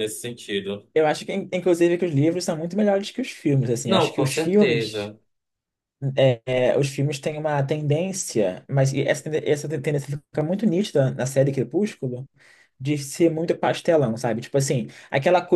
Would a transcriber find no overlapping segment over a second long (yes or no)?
no